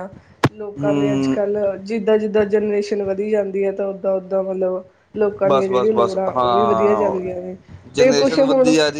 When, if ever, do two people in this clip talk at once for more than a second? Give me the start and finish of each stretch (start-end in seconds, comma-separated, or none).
5.4-7.3